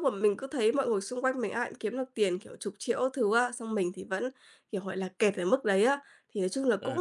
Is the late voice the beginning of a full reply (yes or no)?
no